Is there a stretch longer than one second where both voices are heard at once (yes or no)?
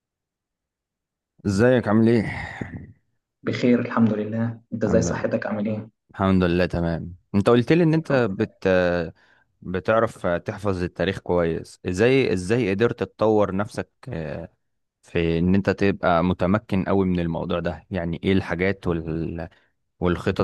no